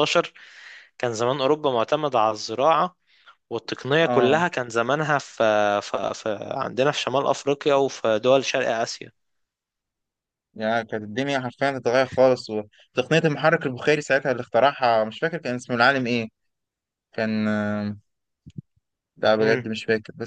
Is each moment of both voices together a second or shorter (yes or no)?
yes